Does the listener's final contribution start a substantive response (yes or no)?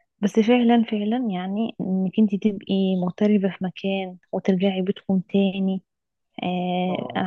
no